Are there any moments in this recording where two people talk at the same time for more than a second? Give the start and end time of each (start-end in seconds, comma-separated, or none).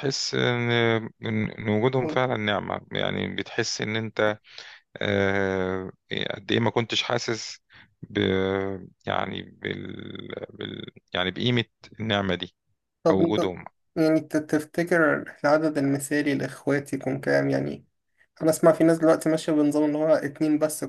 none